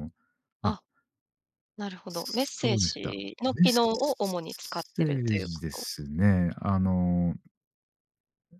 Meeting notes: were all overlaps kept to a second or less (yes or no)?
no